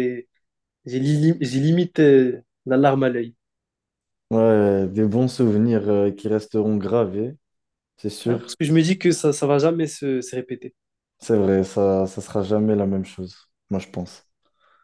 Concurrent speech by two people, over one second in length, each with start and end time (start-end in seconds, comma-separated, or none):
none